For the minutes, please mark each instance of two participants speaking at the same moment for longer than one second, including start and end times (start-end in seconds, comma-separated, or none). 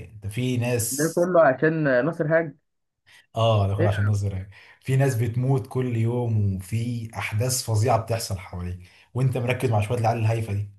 none